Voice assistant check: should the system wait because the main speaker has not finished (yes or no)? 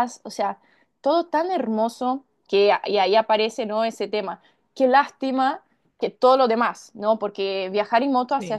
yes